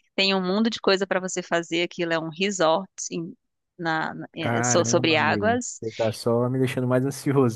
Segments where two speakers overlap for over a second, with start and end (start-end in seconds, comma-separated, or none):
4.4-5.8